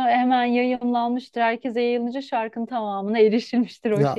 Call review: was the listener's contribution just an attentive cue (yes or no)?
no